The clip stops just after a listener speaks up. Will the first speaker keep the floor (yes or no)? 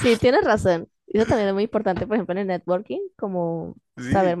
yes